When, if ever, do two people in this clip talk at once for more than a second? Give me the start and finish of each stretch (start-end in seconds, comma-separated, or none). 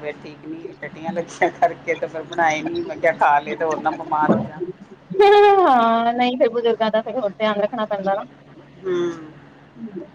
none